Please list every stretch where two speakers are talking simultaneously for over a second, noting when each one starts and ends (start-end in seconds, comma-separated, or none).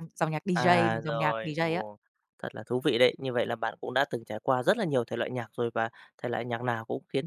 0.5-1.8